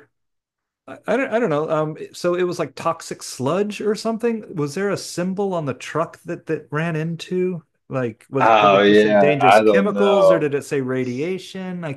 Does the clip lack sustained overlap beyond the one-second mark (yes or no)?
no